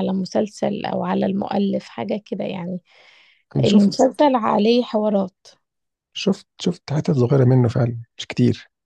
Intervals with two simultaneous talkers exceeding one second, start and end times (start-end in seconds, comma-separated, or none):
none